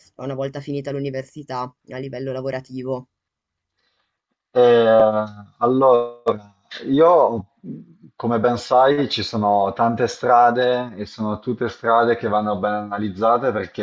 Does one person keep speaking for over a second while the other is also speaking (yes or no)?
no